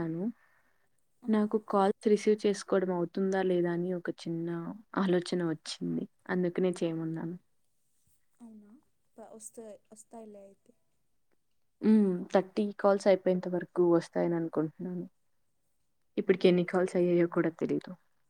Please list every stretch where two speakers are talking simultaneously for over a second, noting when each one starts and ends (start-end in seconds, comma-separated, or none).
none